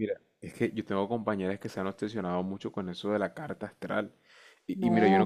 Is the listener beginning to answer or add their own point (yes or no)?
no